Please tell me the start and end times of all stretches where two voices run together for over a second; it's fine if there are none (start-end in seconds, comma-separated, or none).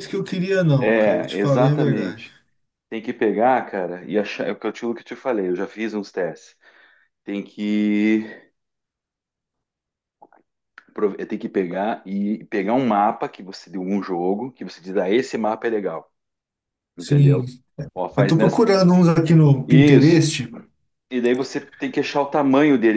0.8-2.3